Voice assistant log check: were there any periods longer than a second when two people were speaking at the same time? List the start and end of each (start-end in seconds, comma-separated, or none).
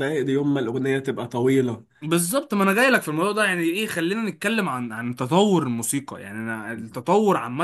none